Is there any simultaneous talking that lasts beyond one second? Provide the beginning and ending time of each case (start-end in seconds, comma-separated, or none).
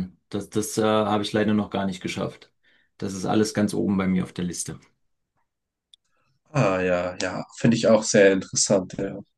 none